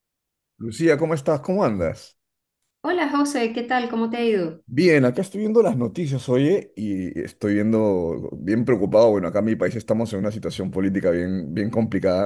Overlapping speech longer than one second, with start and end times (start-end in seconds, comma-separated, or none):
none